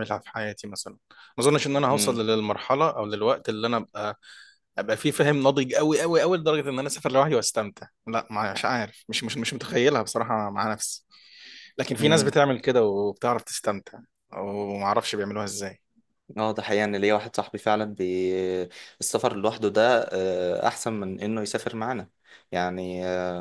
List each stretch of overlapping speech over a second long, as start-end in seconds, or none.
none